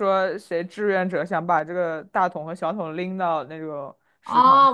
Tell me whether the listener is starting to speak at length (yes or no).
yes